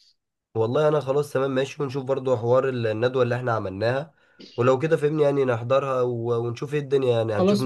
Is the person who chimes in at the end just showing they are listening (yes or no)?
no